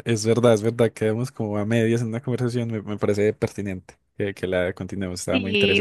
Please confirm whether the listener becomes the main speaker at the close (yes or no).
yes